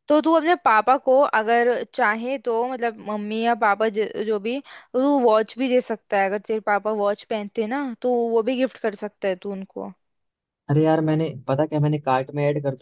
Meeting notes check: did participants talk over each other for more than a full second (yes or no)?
no